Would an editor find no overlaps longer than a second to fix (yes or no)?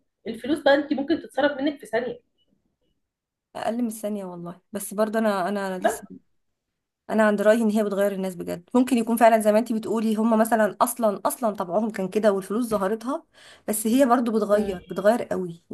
yes